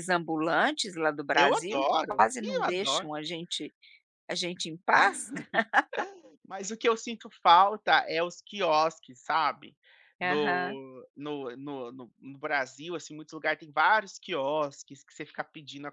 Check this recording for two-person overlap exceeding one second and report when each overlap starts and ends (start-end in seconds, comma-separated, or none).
1.3-3.1